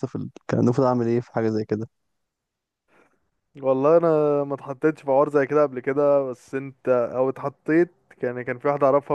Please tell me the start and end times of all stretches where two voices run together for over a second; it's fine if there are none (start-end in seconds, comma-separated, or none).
none